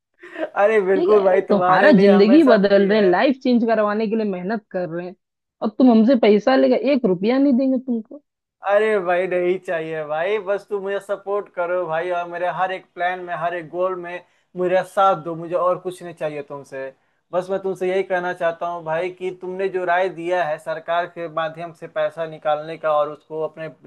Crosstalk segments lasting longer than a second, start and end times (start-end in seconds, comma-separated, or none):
0.9-3.1